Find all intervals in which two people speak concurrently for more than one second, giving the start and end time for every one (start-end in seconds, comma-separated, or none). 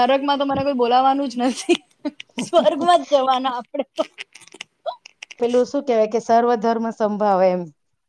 none